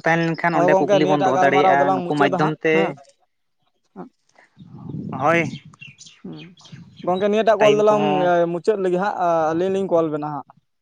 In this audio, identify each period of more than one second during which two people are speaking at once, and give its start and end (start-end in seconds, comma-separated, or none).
0.5-2.7